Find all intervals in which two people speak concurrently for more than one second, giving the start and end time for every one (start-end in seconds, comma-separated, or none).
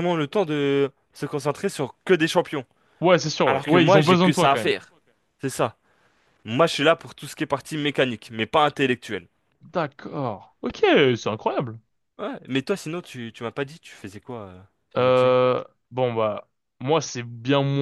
3.5-4.7